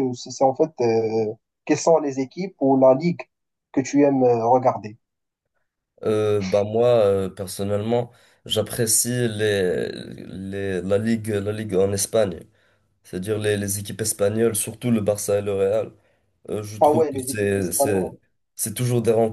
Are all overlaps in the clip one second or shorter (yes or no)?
no